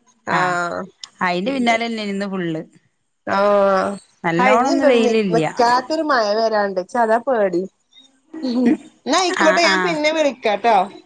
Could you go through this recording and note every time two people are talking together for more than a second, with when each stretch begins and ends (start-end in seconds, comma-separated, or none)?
none